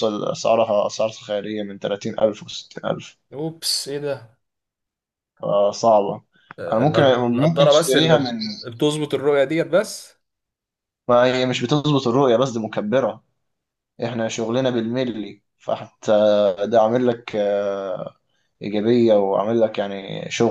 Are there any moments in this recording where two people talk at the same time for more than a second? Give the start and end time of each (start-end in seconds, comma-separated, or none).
6.7-8.4